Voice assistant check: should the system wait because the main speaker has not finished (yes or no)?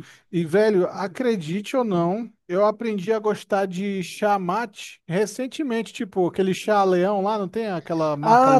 no